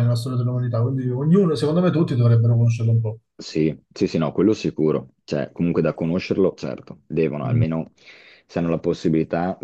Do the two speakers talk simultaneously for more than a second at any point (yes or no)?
no